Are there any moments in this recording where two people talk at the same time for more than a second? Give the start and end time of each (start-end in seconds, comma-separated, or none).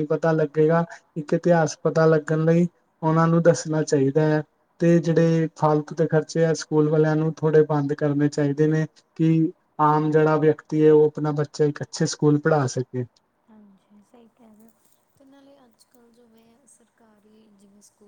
none